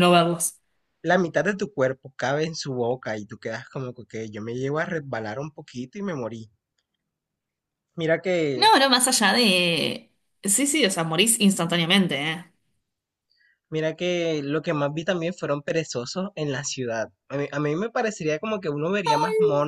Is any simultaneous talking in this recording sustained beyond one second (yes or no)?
no